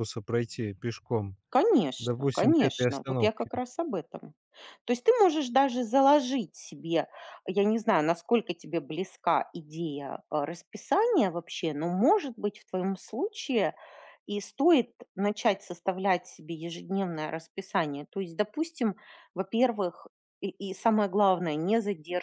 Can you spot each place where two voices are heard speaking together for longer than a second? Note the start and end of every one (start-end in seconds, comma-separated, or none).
2.0-3.5